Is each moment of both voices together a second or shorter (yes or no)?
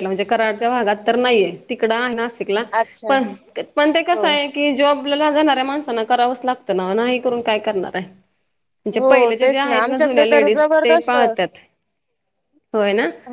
no